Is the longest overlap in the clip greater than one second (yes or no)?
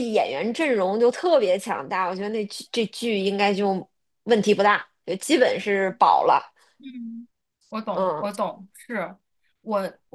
no